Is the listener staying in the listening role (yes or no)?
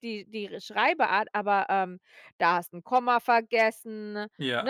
yes